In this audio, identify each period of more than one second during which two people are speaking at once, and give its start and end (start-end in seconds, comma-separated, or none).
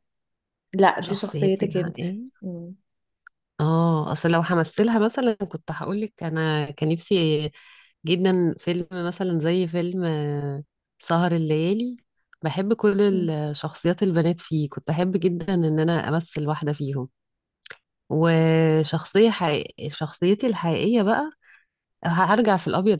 1.0-2.4